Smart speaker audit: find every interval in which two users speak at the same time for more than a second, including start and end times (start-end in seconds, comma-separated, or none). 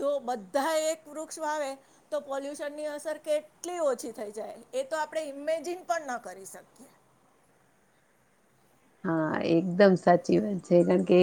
none